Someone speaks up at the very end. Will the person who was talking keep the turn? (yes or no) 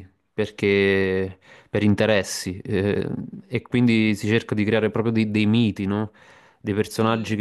yes